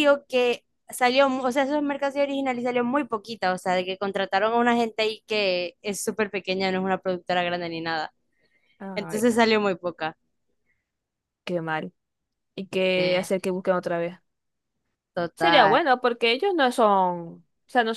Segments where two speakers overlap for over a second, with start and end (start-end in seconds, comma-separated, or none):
none